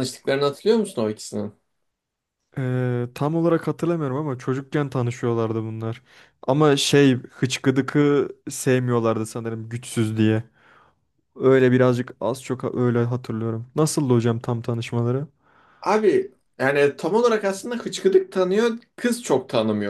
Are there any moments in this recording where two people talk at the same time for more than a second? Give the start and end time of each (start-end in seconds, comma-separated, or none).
none